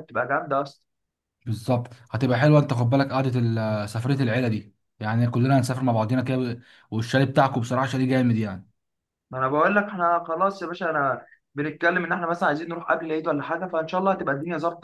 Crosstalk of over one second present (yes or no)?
no